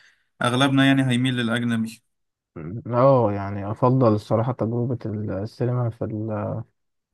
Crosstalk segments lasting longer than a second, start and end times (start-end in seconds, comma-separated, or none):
none